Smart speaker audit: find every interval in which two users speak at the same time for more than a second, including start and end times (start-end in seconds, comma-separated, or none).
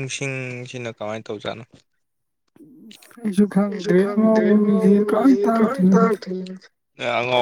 3.7-6.1